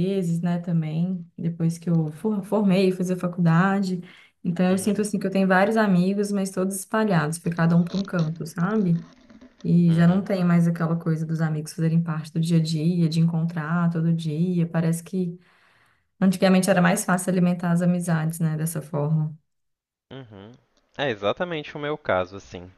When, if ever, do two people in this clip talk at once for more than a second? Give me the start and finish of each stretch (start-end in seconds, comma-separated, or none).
none